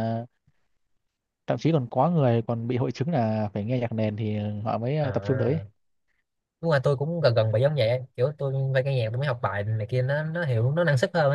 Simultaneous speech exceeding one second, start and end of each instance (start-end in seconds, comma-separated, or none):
none